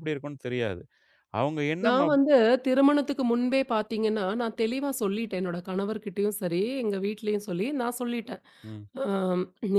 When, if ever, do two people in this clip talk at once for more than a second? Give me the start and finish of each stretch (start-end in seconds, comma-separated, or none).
none